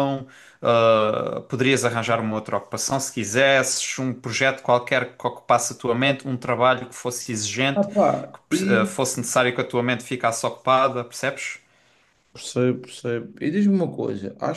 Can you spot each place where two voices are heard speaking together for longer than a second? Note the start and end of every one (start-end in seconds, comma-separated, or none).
none